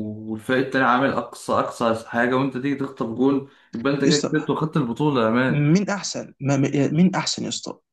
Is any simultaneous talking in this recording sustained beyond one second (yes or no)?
no